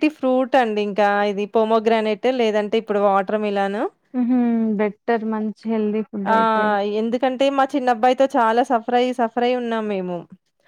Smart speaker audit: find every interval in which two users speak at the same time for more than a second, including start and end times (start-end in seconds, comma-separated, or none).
none